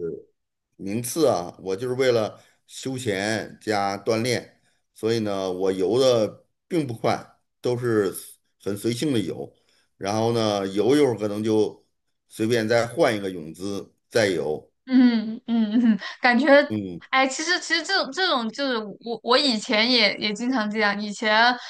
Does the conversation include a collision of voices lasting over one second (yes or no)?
no